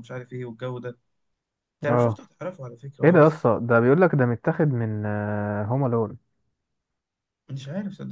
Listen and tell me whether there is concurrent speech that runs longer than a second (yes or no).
no